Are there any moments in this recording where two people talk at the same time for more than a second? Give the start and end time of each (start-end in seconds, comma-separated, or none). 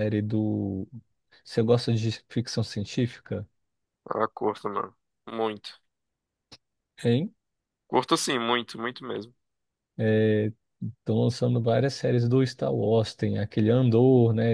none